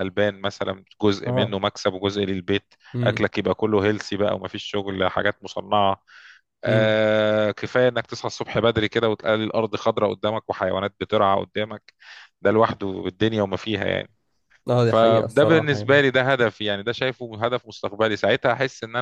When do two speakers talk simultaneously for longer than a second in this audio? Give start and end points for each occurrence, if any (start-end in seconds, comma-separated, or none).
14.8-16.0